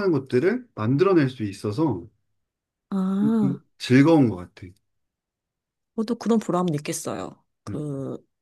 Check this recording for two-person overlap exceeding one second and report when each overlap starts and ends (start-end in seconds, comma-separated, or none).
none